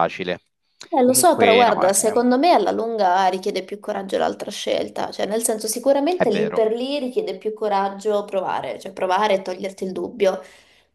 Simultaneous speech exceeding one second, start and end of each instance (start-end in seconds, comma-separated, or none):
1.0-2.2